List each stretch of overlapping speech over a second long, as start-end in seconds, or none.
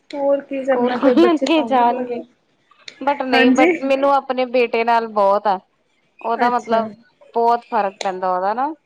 0.6-2.2